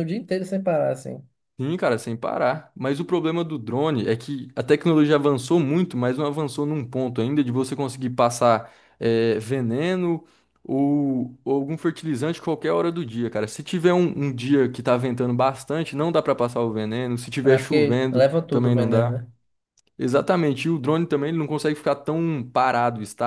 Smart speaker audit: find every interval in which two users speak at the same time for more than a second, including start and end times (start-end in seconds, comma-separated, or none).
17.5-19.2